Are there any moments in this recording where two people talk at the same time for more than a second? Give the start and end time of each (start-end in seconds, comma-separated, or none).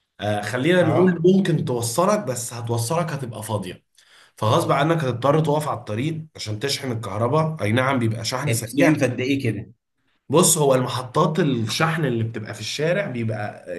none